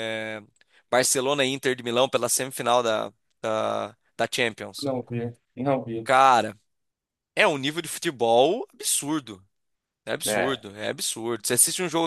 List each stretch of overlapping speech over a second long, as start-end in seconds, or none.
none